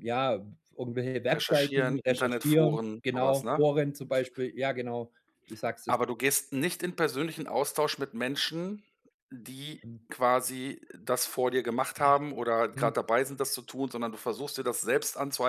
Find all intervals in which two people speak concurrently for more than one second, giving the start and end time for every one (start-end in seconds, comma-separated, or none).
1.3-3.6